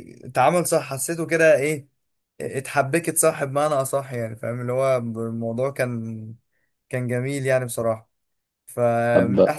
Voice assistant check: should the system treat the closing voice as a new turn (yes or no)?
no